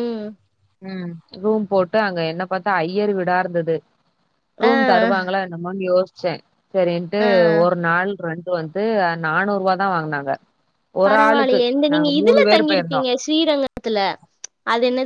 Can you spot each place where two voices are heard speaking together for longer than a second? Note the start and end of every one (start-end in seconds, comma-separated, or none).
11.1-13.0